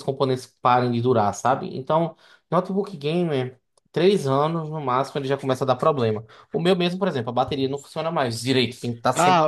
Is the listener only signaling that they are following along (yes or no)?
no